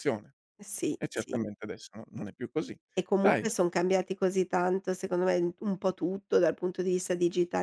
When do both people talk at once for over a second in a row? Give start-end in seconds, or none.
none